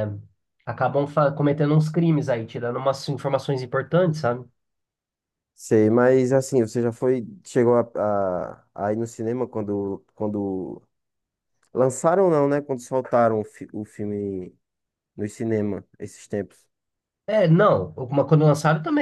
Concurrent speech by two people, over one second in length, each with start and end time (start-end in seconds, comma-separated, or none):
none